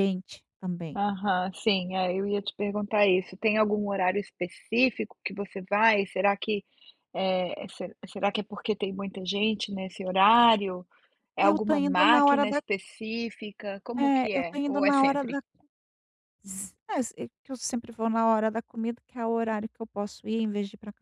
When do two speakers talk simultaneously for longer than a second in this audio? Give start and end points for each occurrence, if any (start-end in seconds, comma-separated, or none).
11.4-12.6, 14.0-15.4